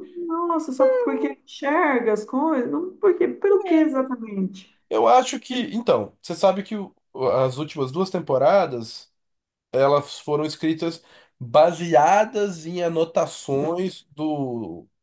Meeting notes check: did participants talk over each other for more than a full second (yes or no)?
no